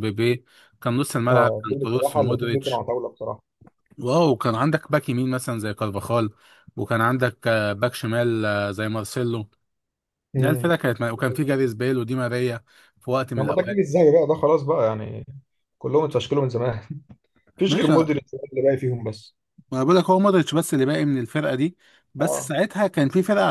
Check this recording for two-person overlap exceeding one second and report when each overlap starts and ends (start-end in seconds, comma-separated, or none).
1.3-2.9